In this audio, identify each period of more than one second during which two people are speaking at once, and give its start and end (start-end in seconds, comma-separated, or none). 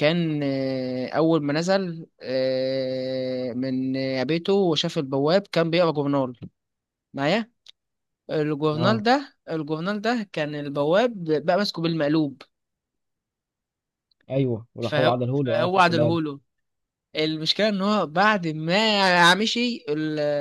14.8-16.2